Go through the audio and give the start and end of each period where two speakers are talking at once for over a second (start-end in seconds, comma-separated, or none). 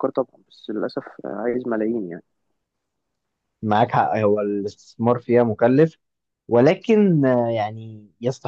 none